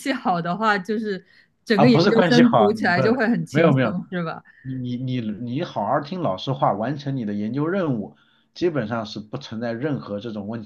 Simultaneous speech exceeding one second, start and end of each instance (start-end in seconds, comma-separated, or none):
1.7-4.0